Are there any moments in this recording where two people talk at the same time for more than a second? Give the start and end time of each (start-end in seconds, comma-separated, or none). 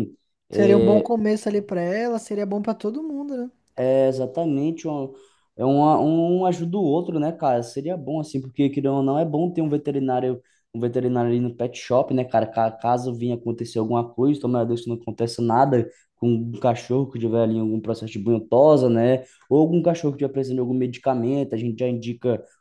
none